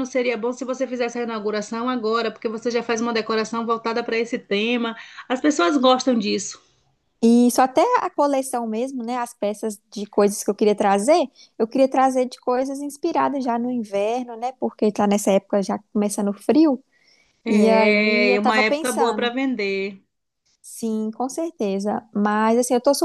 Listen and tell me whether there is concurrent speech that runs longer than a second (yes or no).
yes